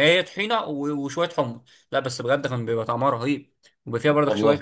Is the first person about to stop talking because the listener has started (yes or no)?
no